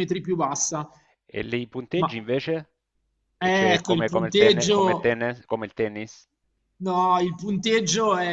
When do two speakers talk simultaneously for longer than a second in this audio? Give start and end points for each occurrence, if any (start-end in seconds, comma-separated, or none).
3.4-5.2